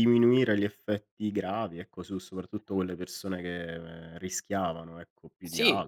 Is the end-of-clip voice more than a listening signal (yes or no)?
yes